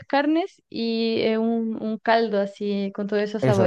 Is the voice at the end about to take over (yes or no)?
yes